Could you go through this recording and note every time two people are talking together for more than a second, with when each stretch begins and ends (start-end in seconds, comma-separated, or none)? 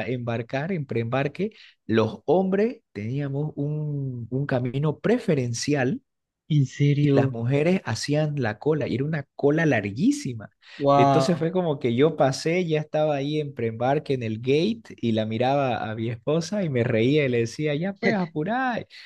none